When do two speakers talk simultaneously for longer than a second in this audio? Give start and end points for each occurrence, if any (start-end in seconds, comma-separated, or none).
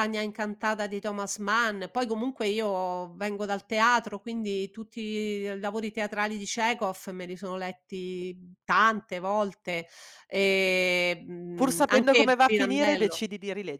11.5-13.2